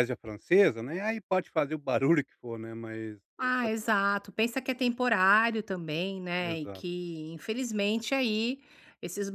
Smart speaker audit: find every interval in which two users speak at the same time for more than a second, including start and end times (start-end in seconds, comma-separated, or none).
none